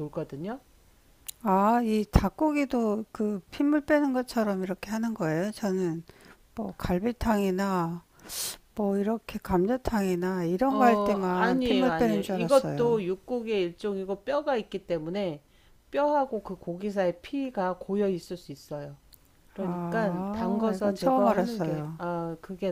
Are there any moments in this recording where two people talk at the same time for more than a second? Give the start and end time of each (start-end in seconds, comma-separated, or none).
10.7-13.0, 19.6-22.0